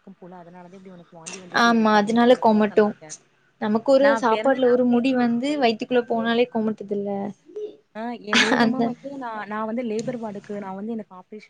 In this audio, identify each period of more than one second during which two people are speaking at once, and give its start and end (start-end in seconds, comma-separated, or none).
4.1-6.3